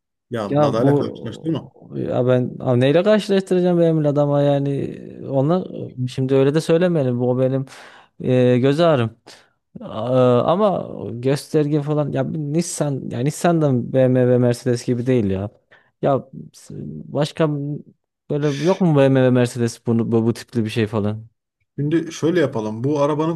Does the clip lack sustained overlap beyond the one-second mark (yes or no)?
no